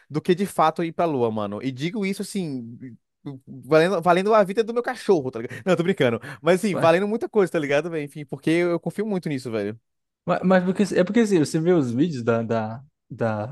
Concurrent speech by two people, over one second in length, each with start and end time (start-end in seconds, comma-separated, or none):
none